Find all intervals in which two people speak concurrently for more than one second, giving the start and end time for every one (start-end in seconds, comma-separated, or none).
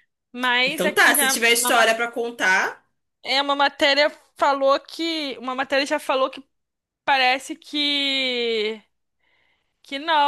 0.6-1.9